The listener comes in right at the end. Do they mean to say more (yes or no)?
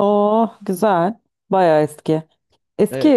no